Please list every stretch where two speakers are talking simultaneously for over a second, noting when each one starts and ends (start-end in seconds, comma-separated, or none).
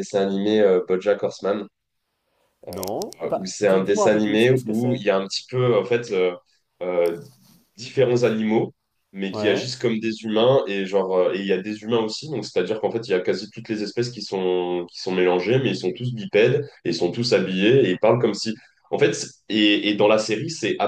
3.2-5.0